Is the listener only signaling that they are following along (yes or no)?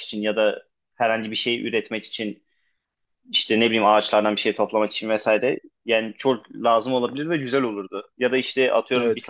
yes